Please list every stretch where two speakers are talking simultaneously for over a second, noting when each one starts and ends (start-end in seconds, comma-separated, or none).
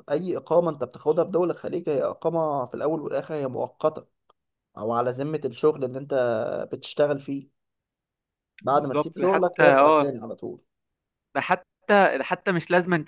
8.7-10.2